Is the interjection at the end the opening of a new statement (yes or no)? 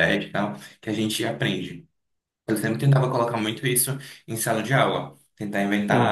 no